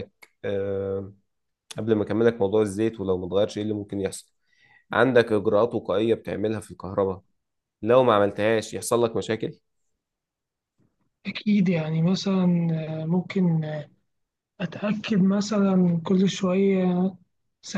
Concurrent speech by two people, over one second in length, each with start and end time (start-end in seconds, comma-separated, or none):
none